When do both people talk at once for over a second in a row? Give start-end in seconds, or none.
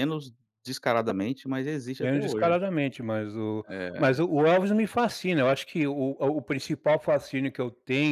none